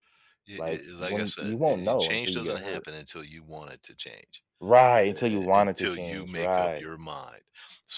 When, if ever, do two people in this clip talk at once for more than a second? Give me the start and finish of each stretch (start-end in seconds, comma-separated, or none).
0.6-2.9, 5.3-6.9